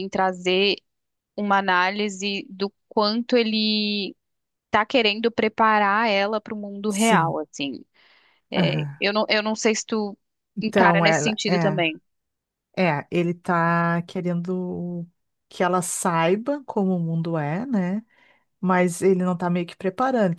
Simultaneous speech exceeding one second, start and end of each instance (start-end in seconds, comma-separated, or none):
10.6-11.8